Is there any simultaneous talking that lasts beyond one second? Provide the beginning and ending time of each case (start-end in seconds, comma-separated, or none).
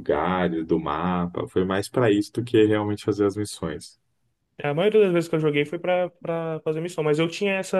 none